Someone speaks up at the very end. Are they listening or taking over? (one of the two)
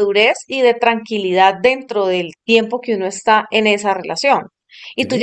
listening